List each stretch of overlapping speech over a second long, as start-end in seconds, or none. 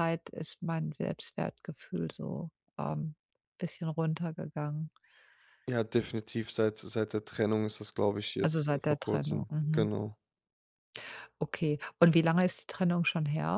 8.4-9.9